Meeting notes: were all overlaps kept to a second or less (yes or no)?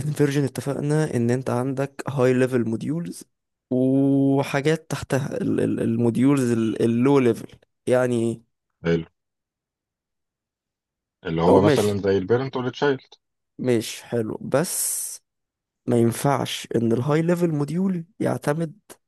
yes